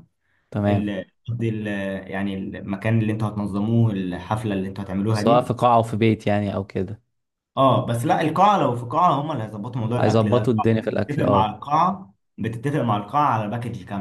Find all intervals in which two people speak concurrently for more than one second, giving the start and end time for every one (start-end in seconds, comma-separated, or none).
10.0-11.6